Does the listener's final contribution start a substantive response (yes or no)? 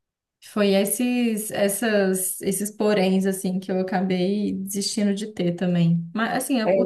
no